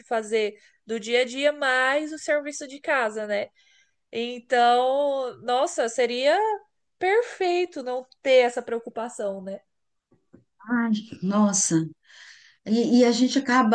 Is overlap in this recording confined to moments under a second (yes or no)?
yes